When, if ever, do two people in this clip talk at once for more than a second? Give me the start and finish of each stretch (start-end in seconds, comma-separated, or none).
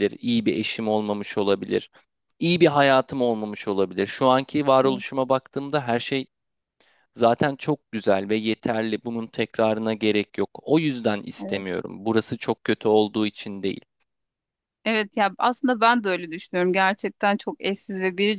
none